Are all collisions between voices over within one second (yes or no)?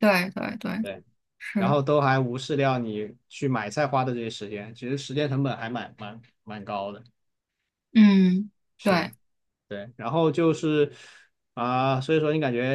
yes